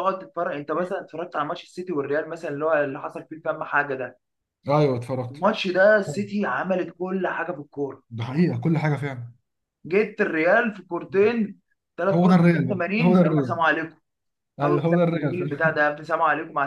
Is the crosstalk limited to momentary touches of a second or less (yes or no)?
no